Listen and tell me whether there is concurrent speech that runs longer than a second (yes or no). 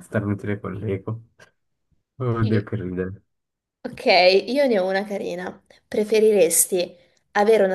no